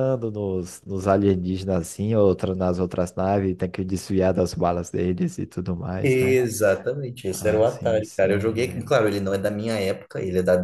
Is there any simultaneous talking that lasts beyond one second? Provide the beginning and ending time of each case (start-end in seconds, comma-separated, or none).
7.3-8.9